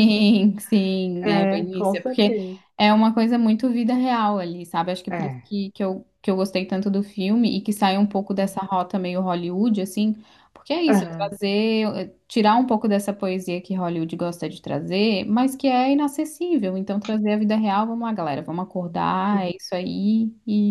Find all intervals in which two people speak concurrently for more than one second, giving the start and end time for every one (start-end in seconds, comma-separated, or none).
1.2-2.4